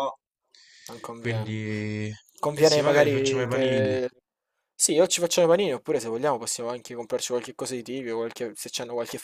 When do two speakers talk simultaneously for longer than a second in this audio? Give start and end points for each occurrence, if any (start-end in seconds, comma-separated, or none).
2.6-4.0